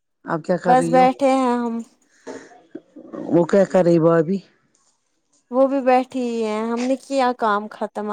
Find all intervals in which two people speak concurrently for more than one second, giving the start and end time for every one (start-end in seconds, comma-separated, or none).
none